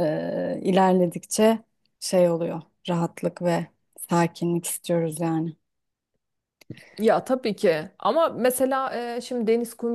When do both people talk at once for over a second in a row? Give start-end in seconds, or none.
none